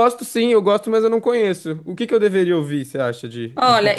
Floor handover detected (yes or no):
yes